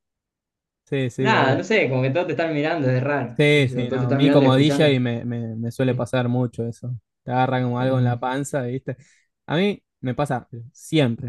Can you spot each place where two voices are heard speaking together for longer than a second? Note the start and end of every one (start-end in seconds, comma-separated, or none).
3.4-5.0